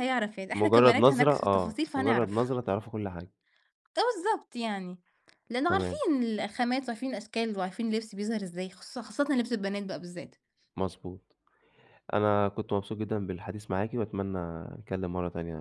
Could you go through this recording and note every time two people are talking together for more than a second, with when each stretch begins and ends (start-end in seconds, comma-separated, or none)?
0.5-2.6